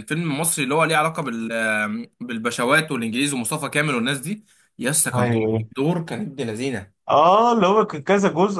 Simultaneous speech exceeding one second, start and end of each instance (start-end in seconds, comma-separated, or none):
none